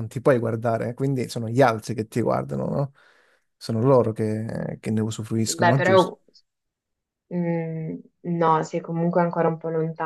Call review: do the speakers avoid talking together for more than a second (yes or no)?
yes